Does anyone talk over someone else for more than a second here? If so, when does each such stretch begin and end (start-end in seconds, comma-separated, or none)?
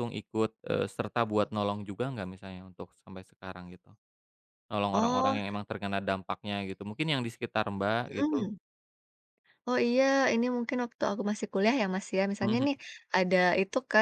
none